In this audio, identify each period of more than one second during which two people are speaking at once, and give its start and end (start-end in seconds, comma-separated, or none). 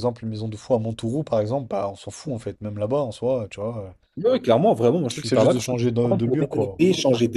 5.0-6.8